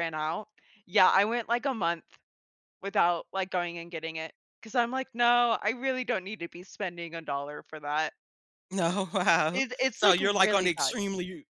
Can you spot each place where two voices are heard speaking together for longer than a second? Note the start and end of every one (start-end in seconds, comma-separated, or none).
9.5-11.0